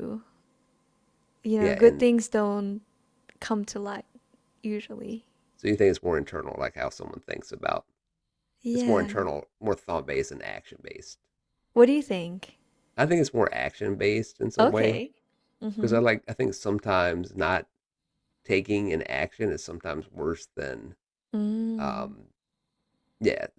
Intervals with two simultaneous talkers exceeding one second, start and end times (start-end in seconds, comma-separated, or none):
none